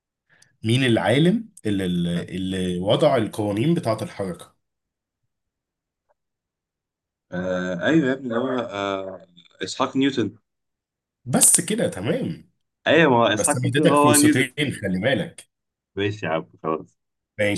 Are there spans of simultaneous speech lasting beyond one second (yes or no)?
yes